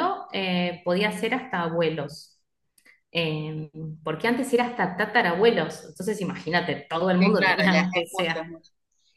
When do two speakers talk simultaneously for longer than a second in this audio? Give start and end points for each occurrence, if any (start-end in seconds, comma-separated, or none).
7.2-8.4